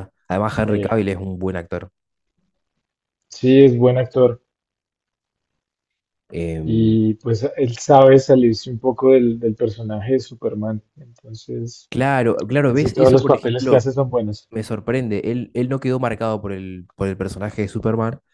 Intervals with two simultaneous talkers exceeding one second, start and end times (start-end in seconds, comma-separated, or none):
12.6-13.9